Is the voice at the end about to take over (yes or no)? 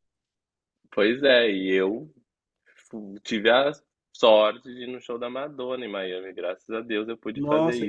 yes